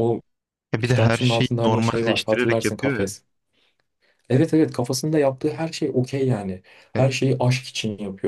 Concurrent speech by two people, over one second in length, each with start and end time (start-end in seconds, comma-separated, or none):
0.8-3.0